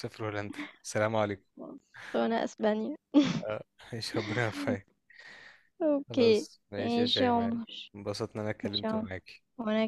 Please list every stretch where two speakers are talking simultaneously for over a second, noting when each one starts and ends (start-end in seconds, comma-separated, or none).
6.1-7.5